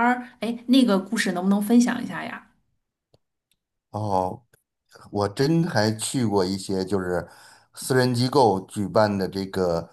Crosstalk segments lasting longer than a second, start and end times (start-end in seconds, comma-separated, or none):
none